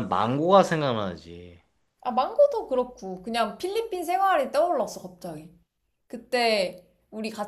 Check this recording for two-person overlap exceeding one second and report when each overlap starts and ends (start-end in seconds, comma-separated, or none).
none